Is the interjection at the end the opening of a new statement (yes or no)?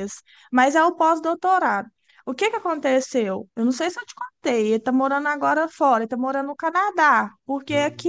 no